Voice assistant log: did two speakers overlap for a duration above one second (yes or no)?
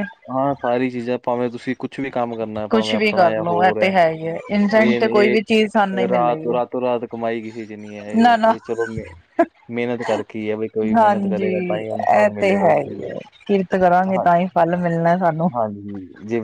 yes